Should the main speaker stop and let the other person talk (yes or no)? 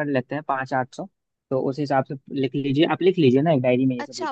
yes